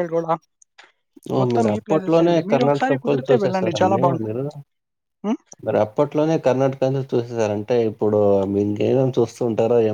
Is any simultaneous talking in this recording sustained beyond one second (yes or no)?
yes